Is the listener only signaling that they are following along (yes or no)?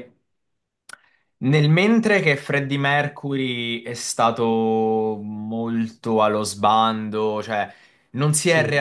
yes